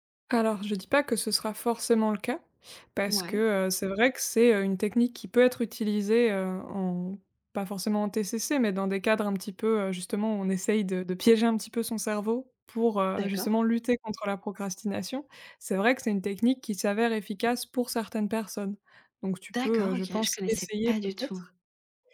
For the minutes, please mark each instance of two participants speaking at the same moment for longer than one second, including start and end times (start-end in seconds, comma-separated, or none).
19.5-21.5